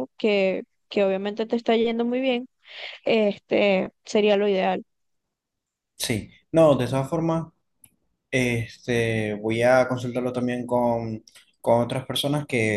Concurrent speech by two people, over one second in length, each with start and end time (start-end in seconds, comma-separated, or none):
none